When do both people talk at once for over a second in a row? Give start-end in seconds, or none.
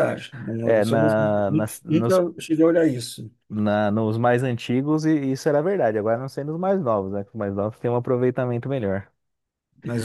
none